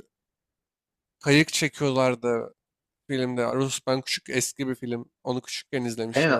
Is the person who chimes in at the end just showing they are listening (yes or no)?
no